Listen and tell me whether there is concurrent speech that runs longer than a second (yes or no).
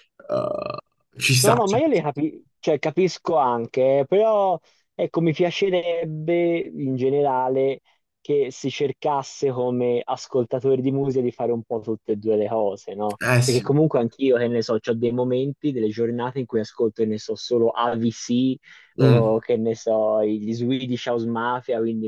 no